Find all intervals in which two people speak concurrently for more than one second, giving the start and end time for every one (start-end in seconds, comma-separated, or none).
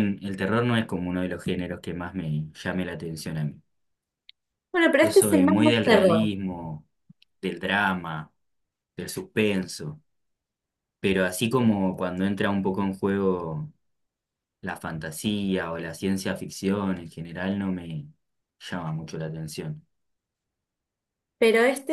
5.0-6.3